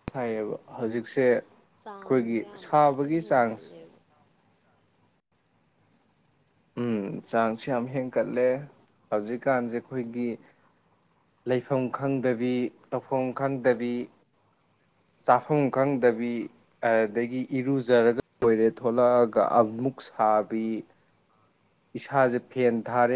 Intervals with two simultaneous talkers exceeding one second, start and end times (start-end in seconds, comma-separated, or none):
1.9-3.9